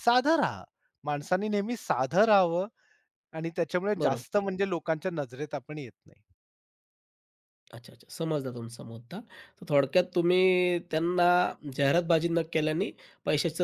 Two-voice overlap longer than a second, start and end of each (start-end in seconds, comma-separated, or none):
none